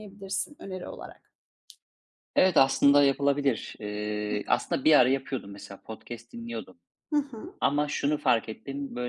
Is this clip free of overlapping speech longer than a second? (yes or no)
yes